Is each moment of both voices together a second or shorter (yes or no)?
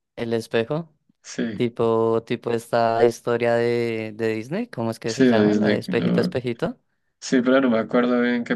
no